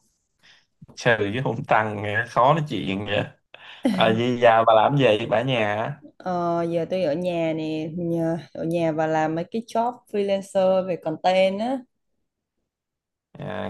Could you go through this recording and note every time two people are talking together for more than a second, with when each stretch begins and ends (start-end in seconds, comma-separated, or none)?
none